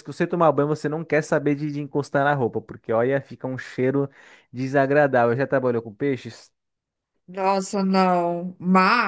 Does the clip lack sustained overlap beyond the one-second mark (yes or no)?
yes